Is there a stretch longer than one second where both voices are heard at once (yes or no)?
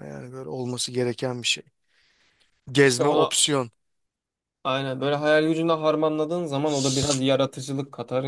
no